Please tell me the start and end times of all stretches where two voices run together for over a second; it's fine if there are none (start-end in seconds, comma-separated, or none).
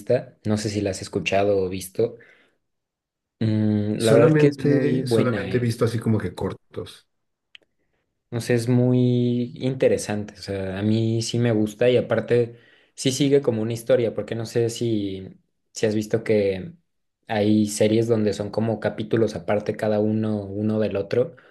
4.0-5.6